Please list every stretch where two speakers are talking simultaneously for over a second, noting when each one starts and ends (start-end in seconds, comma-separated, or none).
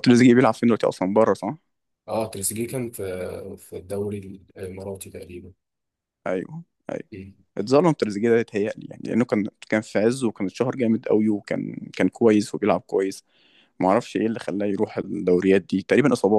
none